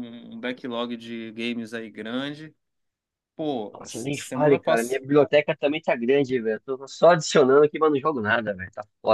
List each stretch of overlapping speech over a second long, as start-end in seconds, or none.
3.7-5.0